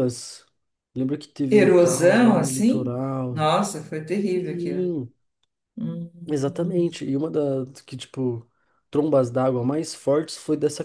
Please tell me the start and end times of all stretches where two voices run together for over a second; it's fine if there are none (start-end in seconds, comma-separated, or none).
1.5-3.5